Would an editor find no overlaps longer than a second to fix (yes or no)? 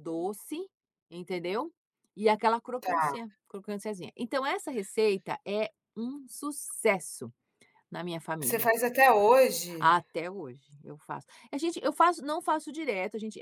yes